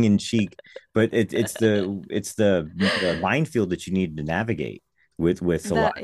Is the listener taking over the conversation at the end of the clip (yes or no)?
no